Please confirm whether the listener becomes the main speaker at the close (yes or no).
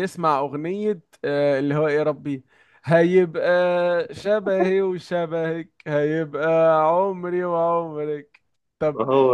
no